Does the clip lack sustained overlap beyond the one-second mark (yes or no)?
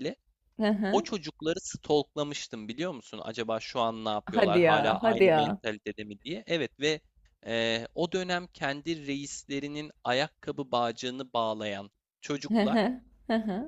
no